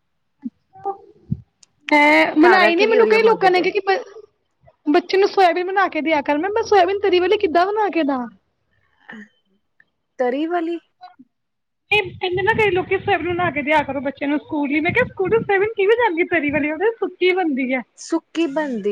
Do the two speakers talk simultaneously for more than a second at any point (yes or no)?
yes